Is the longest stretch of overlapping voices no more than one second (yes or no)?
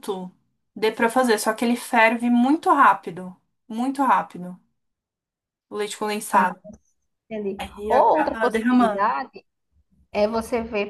no